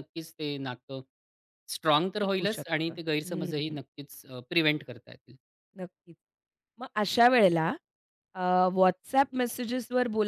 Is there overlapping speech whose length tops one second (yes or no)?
yes